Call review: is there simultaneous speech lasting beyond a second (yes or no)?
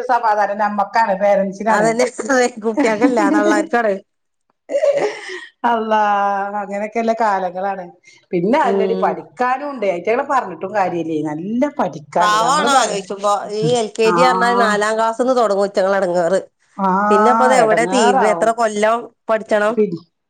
yes